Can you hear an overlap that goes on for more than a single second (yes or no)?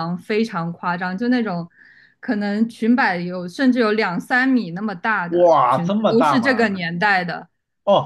yes